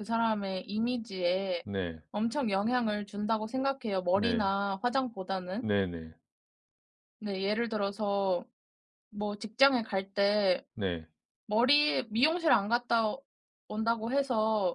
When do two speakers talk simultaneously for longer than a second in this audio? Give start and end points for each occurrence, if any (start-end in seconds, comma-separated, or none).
none